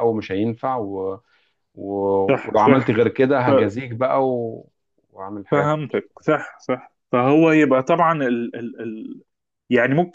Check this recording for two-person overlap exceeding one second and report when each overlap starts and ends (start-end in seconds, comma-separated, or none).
none